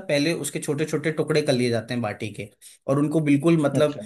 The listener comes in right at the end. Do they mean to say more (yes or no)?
no